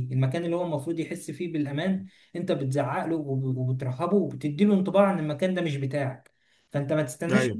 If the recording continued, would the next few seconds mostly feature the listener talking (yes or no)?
no